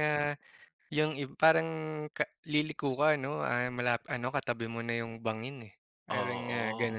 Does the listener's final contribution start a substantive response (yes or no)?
yes